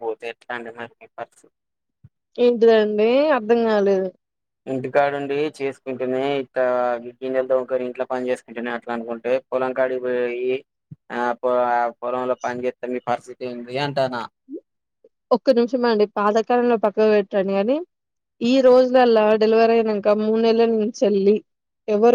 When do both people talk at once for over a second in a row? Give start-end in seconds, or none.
none